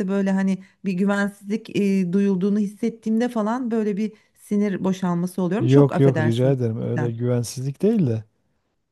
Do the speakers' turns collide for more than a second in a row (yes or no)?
yes